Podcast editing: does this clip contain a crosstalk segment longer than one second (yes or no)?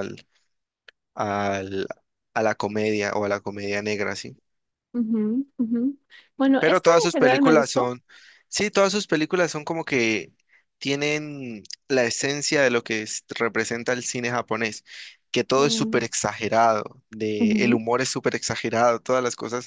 yes